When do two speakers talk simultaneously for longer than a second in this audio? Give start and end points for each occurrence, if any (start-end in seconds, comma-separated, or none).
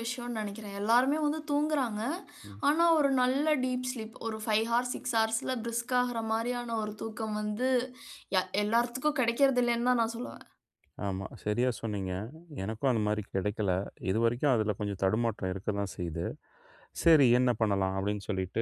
none